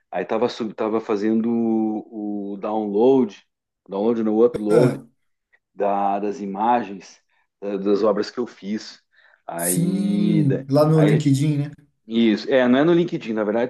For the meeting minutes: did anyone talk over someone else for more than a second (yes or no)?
yes